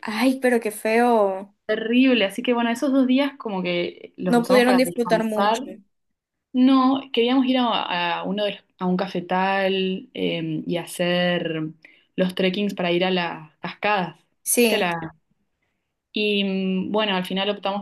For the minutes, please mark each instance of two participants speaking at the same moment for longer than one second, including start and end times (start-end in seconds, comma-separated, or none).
4.3-5.6